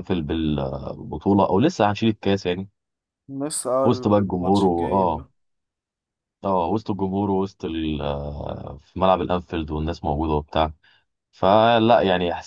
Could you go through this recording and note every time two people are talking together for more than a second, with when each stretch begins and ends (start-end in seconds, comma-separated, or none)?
3.9-5.3